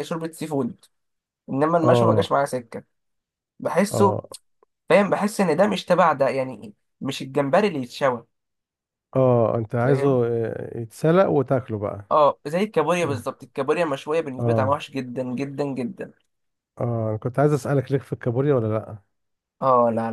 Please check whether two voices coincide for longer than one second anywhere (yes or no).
no